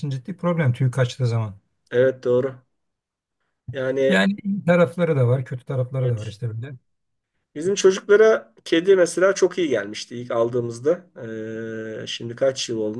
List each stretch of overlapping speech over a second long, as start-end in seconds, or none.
none